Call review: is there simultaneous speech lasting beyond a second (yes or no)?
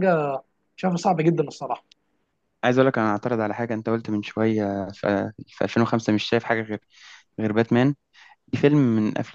no